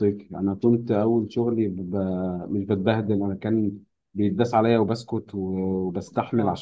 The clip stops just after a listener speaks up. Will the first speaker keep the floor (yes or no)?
yes